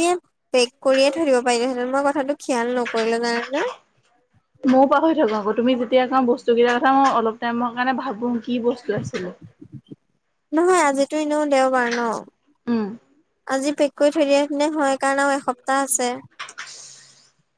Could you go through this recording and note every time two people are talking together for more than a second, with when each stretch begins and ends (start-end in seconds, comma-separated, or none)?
none